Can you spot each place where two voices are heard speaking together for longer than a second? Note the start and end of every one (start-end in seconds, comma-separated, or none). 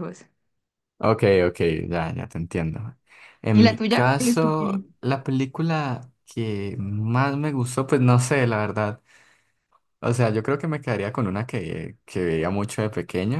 3.5-4.9